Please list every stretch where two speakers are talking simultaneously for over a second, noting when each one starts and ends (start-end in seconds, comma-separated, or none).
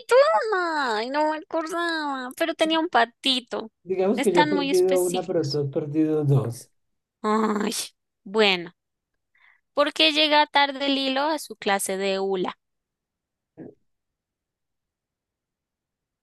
4.2-5.6